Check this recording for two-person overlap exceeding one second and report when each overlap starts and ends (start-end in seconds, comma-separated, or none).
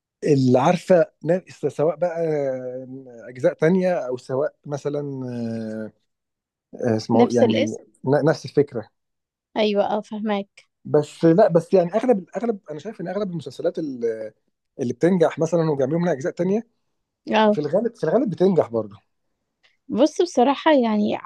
none